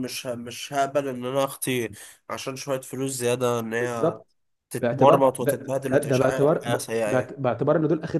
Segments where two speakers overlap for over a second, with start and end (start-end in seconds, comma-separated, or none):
4.8-7.3